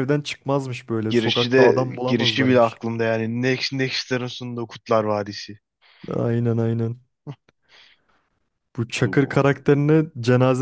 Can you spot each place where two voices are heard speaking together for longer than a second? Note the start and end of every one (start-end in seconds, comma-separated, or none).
1.1-2.8